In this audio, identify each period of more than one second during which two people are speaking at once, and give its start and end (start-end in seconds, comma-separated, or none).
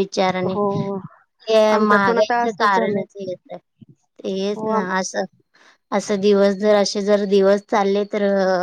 1.8-3.0